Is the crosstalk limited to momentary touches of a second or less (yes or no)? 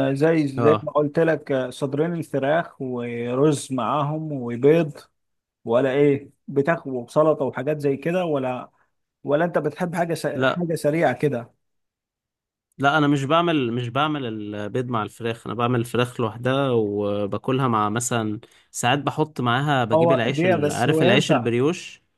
no